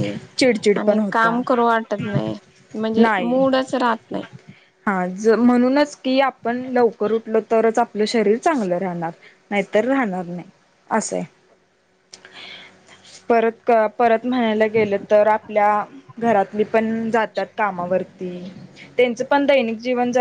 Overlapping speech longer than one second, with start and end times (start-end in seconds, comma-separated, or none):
none